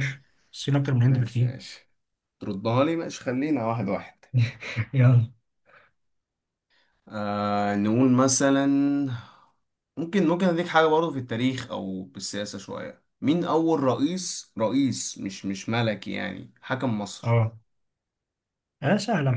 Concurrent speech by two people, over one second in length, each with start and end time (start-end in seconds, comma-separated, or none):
none